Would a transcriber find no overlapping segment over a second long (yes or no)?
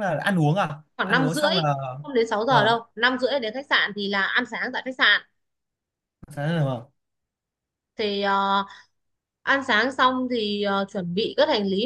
yes